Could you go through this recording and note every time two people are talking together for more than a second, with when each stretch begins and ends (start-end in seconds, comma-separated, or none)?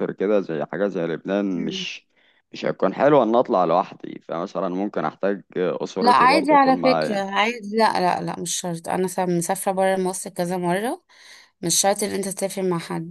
6.0-7.2